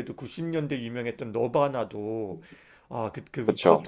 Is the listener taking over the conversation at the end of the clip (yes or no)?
no